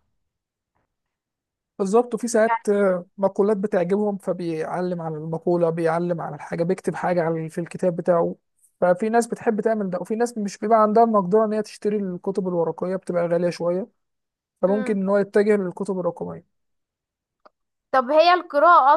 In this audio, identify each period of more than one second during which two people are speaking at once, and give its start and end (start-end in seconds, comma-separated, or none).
none